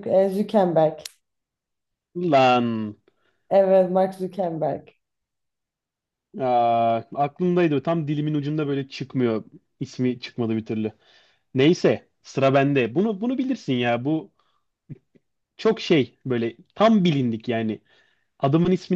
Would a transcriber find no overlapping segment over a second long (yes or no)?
yes